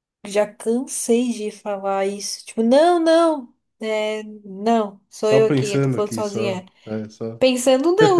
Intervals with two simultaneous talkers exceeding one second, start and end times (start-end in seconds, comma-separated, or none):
5.2-6.6